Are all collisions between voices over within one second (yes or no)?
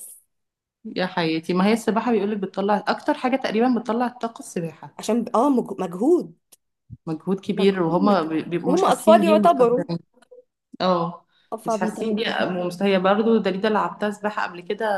no